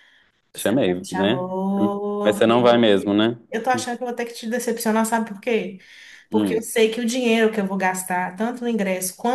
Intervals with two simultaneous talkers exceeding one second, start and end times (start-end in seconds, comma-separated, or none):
0.5-2.6